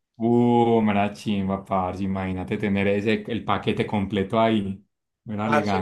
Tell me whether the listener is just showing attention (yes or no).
no